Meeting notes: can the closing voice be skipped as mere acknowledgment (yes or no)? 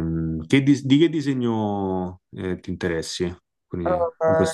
no